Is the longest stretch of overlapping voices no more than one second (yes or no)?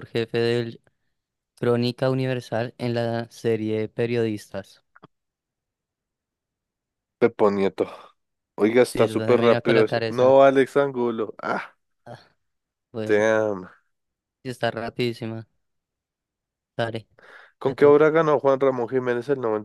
no